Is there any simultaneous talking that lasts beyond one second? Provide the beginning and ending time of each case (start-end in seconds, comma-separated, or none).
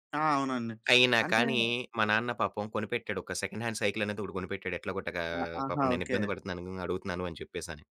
none